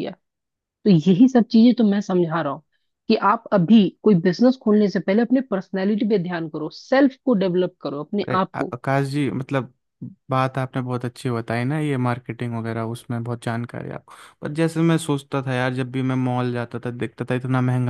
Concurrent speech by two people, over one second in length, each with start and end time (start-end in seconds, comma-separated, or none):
none